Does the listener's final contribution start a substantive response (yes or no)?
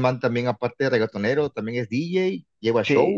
yes